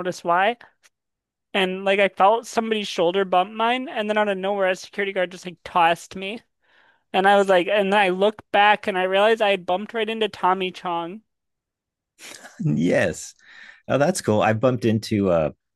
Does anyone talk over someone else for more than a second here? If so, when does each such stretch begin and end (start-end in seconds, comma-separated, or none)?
none